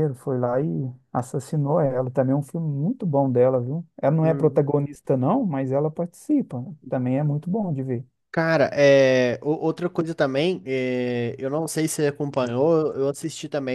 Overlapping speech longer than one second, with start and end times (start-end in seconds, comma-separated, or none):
none